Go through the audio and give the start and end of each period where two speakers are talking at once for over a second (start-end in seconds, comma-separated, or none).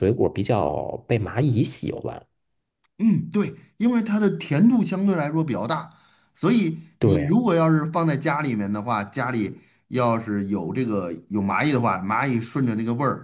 none